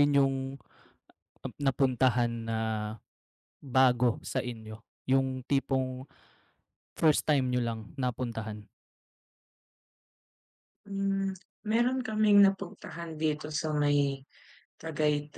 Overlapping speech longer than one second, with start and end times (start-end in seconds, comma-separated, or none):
none